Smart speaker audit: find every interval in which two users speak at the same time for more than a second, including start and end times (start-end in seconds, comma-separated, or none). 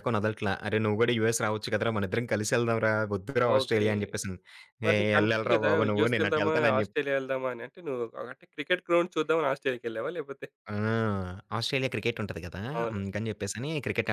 4.9-7.0